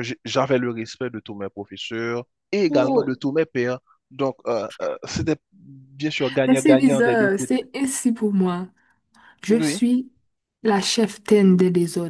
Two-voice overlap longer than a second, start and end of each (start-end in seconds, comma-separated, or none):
6.5-7.7